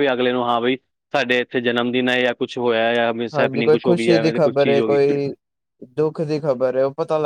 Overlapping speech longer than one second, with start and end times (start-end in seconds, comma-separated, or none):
3.4-5.0